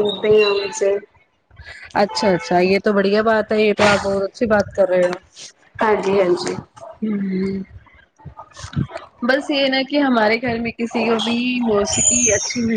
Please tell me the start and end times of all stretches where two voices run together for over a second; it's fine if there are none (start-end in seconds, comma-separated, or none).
none